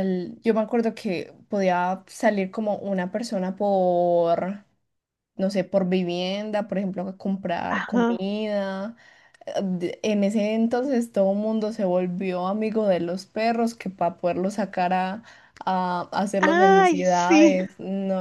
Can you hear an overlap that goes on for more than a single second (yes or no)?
yes